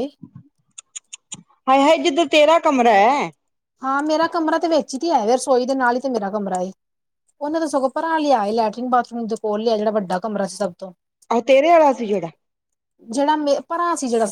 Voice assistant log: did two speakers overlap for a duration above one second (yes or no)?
no